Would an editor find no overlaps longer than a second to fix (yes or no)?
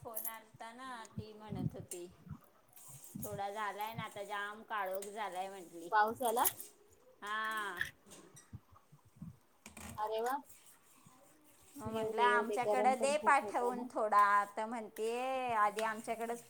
no